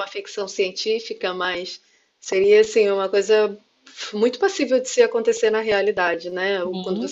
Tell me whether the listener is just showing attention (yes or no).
yes